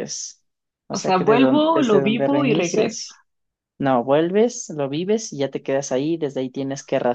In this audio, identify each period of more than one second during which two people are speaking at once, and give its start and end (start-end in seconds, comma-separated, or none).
0.9-3.1